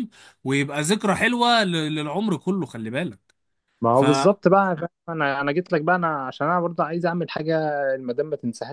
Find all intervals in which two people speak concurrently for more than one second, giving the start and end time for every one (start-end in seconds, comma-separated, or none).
none